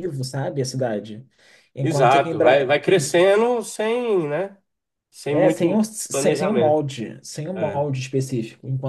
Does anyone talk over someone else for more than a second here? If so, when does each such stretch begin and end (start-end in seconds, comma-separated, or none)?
1.8-3.2, 5.3-6.8